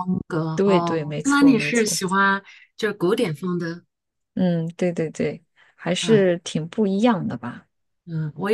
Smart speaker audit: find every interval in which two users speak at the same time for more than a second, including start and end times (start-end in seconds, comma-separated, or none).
0.6-2.0